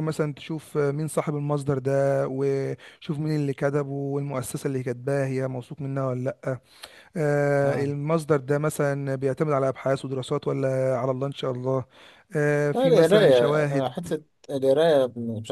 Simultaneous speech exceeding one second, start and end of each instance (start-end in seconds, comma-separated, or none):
12.7-13.9